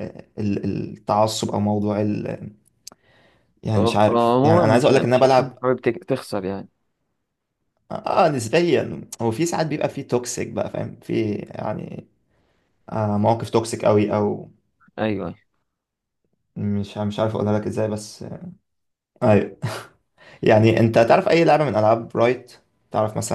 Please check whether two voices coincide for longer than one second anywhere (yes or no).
yes